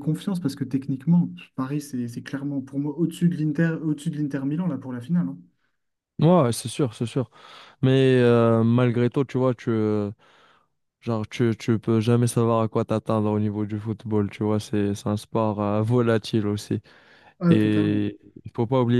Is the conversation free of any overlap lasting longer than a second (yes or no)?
yes